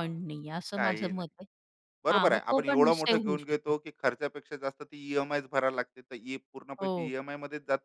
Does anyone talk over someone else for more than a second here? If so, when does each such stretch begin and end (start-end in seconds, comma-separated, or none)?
2.1-3.7